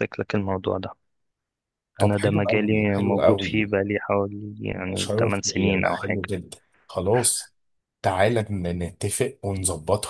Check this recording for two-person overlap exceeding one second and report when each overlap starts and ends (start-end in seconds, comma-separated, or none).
2.0-3.8, 4.8-6.2